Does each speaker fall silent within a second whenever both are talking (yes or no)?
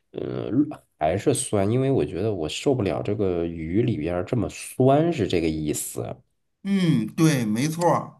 yes